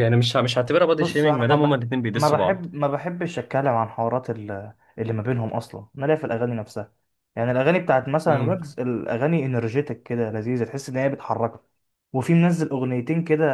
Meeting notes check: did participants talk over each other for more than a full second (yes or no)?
yes